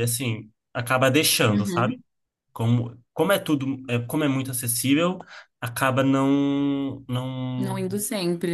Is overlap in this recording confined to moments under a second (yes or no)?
yes